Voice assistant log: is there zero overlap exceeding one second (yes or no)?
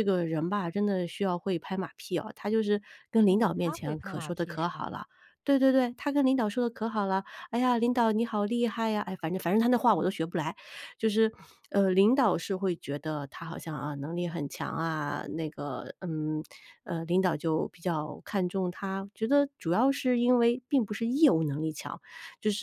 no